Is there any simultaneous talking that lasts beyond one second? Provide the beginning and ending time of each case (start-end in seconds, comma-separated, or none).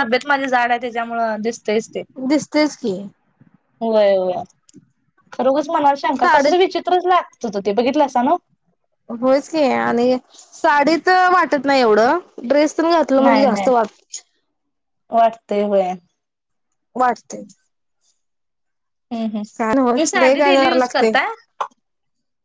19.6-21.1